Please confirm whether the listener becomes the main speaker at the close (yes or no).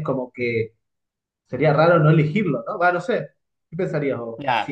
yes